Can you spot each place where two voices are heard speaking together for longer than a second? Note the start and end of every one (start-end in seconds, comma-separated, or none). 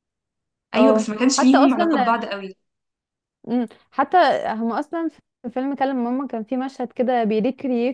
0.8-2.2